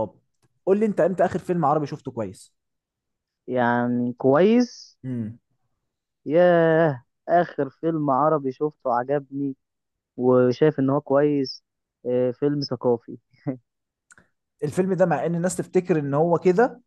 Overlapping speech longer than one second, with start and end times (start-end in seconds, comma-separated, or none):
none